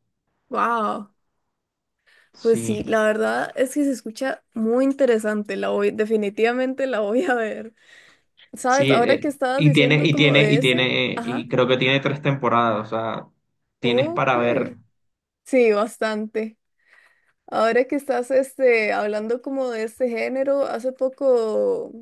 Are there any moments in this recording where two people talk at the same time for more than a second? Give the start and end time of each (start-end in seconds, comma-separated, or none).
8.7-11.4